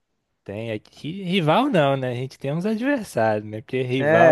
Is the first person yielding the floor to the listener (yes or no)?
yes